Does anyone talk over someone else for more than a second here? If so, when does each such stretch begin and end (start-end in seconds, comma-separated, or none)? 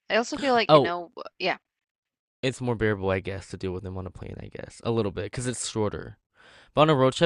none